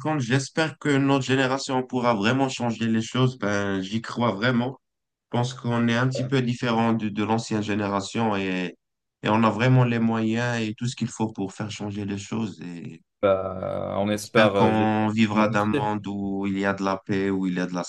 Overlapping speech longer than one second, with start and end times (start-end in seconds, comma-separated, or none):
14.1-15.9